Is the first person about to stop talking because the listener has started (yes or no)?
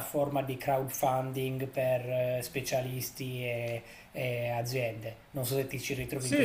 yes